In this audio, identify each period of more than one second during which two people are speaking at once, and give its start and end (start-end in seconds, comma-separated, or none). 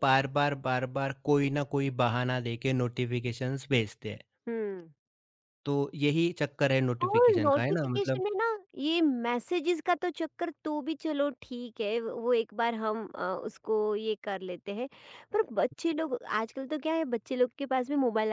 7.0-8.2